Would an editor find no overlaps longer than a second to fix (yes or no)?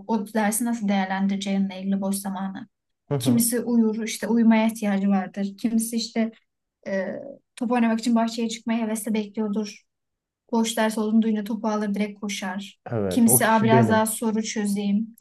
no